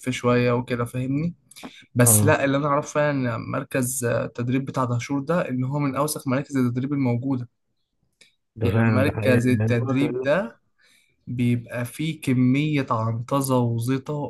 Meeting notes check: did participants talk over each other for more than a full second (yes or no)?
yes